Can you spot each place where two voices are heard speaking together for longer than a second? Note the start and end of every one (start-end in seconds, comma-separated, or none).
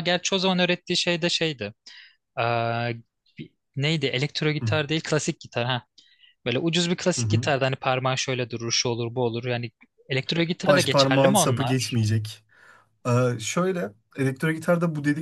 10.7-12.0